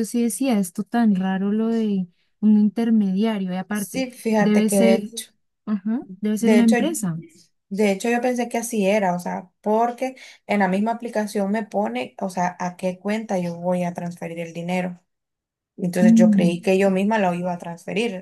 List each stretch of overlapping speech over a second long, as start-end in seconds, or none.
3.7-5.1